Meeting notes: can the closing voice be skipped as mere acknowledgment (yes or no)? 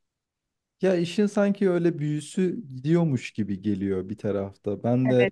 no